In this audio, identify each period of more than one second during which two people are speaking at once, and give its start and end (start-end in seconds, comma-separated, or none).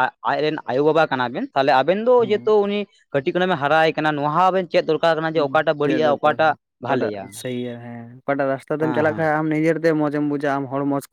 none